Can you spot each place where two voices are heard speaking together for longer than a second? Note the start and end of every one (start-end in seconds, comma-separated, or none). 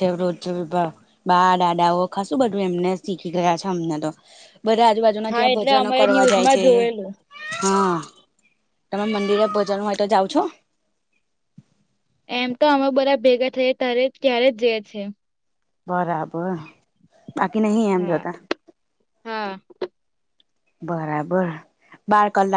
5.3-6.6